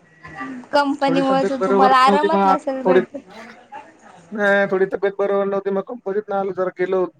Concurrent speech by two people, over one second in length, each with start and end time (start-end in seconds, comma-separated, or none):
1.1-3.0